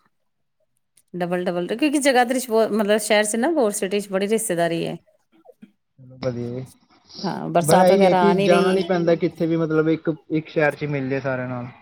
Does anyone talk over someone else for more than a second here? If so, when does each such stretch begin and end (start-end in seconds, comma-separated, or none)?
7.7-9.1